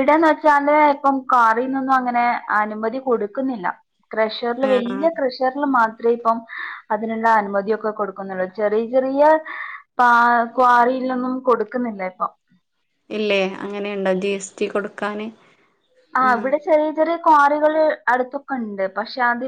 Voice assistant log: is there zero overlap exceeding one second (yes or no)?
yes